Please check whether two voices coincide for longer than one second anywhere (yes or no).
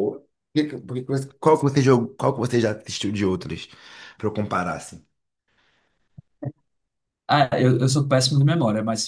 no